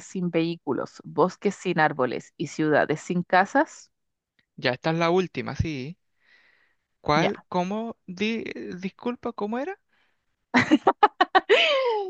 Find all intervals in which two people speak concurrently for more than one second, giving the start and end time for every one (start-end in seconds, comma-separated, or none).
none